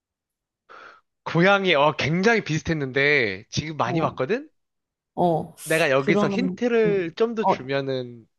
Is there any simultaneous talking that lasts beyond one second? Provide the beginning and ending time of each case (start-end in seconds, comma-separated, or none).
6.0-7.7